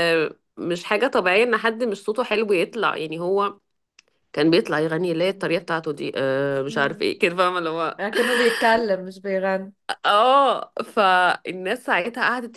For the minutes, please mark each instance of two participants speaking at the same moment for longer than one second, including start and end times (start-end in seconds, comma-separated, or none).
none